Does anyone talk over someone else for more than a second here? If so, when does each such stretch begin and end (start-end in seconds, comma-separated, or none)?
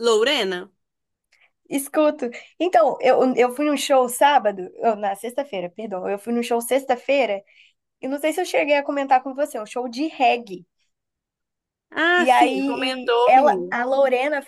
12.2-13.8